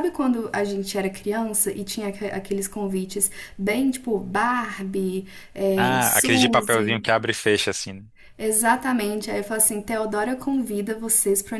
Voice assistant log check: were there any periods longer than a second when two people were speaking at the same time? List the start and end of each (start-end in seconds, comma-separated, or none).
5.8-7.1